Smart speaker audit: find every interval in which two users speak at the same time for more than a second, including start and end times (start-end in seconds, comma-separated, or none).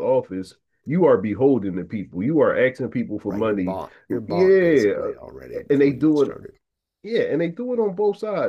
3.2-4.9